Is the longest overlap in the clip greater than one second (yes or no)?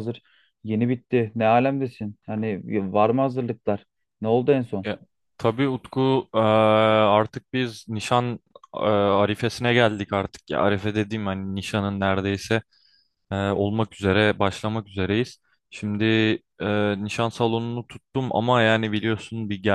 no